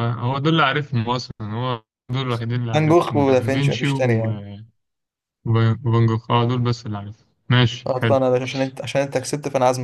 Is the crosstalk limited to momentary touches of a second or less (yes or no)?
no